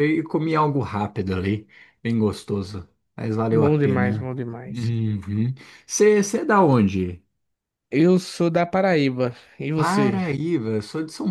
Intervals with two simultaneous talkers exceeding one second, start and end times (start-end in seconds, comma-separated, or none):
3.5-4.9